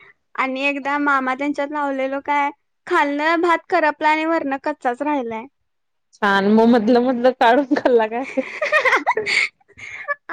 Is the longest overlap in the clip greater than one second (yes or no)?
no